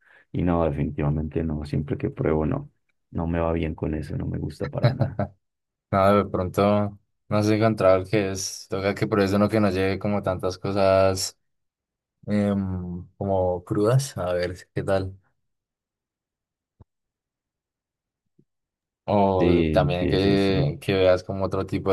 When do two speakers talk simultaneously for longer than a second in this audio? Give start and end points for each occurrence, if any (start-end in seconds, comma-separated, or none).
19.4-20.7